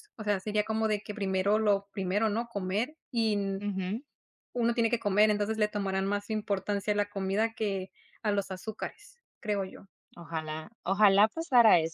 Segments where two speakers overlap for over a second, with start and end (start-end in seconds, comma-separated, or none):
none